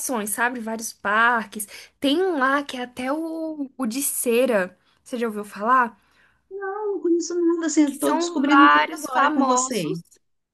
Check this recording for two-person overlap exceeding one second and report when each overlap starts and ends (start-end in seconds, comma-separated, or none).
7.9-10.0